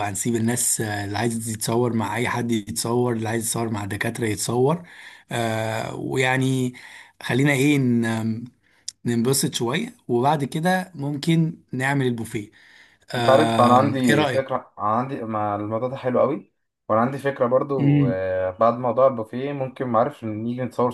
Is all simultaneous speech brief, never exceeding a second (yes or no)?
no